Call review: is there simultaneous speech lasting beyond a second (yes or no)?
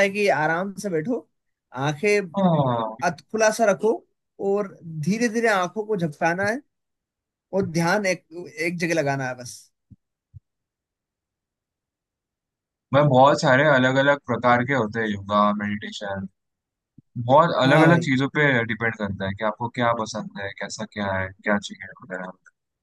no